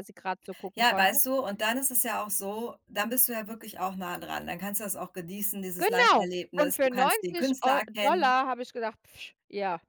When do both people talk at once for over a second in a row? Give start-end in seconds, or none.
5.8-8.4